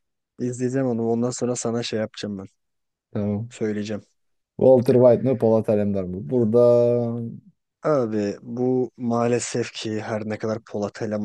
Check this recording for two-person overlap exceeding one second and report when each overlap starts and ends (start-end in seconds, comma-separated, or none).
none